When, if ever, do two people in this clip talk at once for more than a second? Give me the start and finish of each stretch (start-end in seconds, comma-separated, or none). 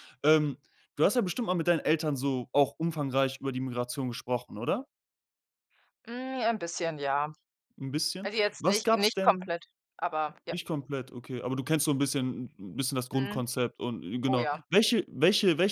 8.2-9.5